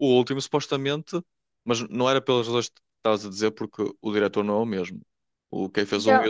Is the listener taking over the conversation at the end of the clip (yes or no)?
no